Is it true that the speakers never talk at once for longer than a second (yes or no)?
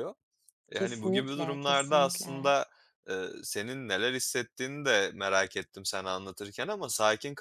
no